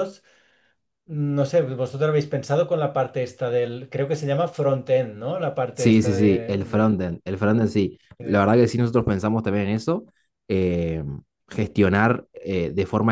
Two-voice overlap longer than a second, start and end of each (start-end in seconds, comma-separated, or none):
5.7-7.0